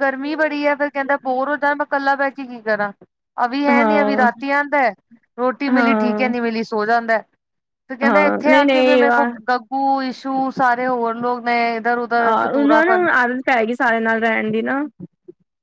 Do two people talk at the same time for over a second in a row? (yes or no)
yes